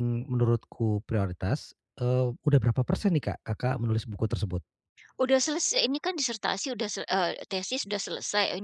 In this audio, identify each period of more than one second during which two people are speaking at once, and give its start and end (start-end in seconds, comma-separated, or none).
none